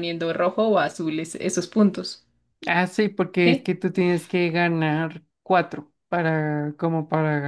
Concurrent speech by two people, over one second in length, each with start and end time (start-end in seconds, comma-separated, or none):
none